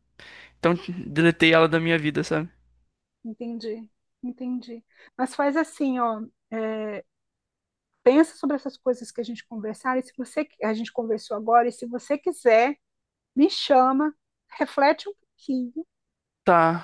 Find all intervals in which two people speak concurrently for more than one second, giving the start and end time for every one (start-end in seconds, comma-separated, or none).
none